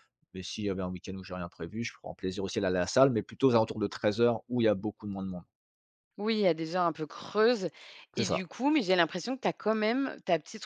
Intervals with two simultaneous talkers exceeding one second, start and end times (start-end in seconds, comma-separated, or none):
none